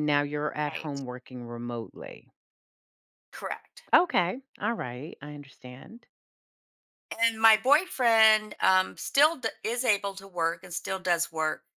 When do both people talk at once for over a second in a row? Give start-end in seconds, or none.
none